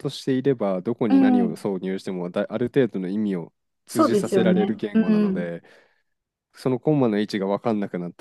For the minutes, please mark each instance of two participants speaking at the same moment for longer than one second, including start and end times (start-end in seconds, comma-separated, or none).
3.9-5.5